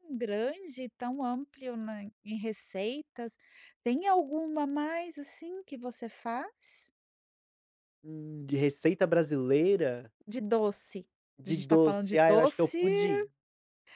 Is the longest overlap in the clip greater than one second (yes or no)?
yes